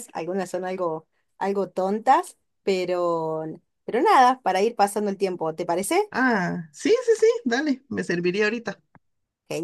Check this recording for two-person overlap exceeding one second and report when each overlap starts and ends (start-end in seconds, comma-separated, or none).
none